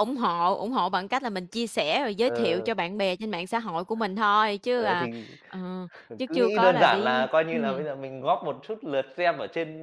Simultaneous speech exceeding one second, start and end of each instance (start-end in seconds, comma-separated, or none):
6.2-7.9